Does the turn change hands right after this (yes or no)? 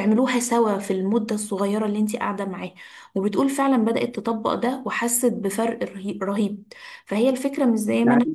no